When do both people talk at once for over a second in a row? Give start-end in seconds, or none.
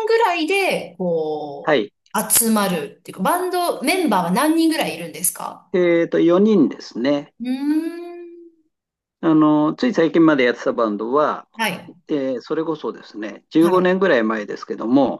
none